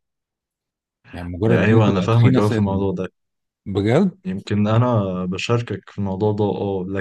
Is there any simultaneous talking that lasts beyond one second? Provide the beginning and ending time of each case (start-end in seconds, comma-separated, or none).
1.5-2.9